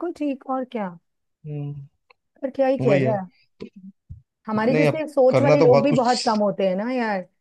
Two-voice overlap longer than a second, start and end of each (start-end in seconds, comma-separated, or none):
4.5-6.4